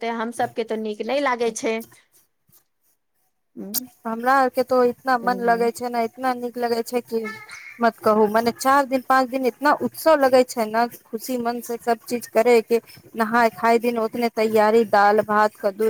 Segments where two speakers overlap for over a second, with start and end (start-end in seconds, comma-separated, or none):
none